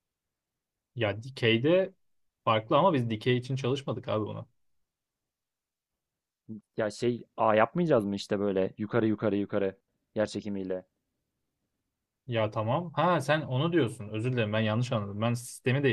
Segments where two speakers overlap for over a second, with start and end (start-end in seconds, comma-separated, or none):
none